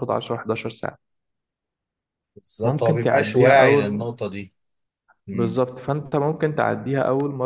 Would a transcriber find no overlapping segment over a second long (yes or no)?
no